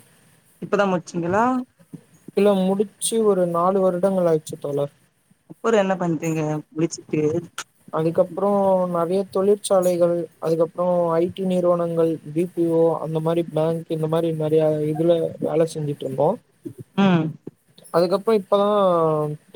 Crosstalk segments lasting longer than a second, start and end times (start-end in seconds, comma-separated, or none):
none